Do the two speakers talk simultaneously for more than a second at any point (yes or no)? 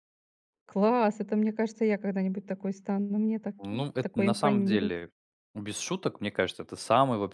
yes